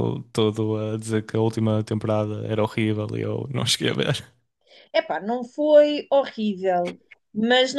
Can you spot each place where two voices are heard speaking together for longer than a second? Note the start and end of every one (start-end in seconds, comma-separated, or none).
none